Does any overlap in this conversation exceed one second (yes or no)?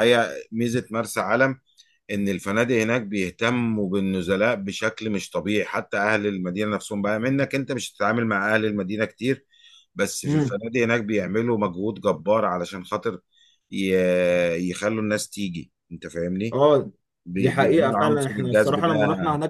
yes